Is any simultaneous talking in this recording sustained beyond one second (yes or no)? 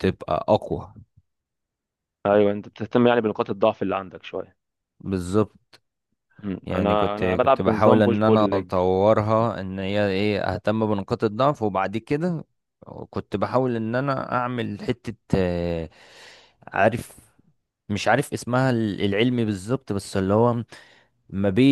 yes